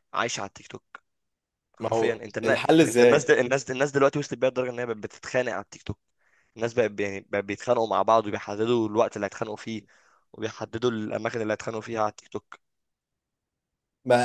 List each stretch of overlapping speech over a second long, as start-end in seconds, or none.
1.8-3.4